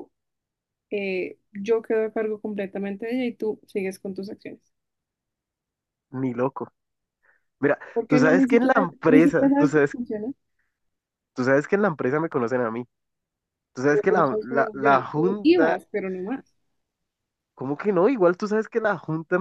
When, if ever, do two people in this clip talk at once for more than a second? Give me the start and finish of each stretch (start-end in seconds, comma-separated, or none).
7.9-9.9, 13.9-15.8